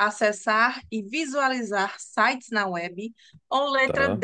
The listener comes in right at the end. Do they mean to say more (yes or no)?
no